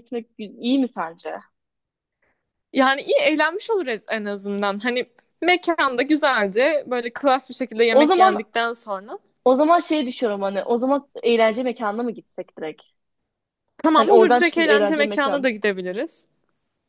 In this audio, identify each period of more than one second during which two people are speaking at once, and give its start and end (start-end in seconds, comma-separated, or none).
14.0-15.5